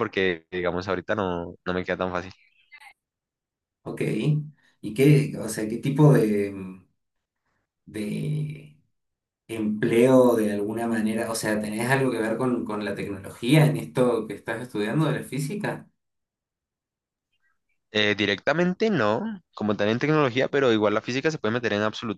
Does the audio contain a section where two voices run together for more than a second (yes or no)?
no